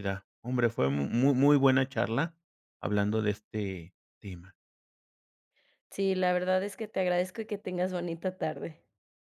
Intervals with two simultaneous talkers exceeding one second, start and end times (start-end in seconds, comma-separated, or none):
none